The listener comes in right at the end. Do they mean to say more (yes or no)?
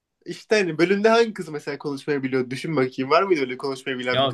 yes